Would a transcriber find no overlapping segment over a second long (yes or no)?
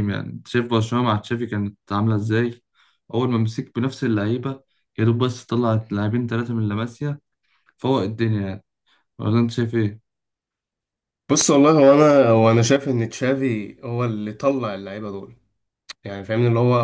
yes